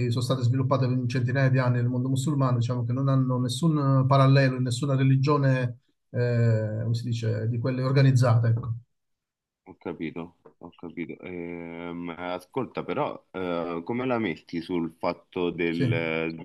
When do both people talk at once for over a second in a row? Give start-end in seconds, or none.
none